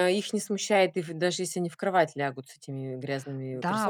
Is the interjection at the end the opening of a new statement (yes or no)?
yes